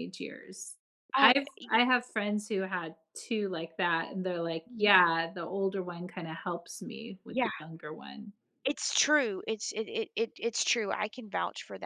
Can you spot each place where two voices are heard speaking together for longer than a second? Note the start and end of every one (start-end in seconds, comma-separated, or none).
none